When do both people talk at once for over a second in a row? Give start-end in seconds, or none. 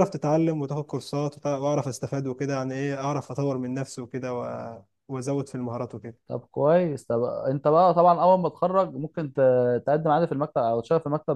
none